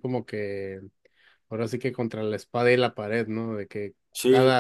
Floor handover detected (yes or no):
no